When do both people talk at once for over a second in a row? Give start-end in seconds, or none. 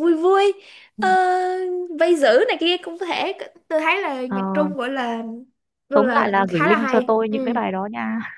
5.9-7.6